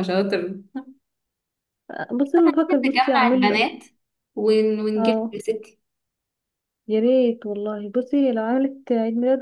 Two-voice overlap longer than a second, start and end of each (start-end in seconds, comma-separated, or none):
2.4-3.7